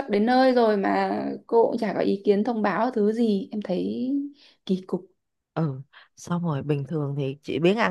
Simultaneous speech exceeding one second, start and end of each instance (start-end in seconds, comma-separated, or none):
none